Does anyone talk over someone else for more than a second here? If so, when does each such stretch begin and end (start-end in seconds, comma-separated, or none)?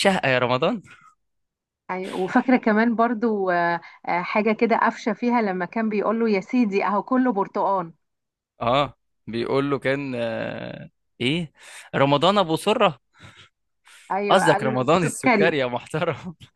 14.3-15.6